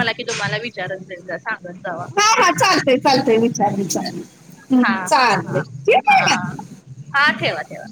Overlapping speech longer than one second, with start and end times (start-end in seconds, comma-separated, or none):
none